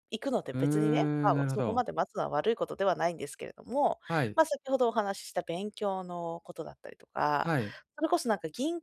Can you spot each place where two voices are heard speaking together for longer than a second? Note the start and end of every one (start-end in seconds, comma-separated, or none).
0.5-1.8